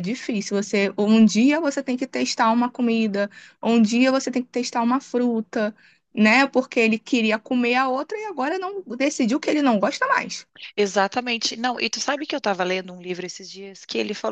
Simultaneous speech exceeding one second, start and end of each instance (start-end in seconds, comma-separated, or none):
none